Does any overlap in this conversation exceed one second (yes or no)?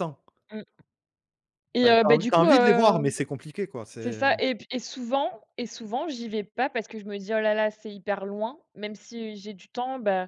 yes